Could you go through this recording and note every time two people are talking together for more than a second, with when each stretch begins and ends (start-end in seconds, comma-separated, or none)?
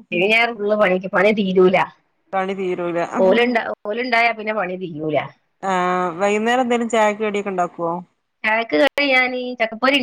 none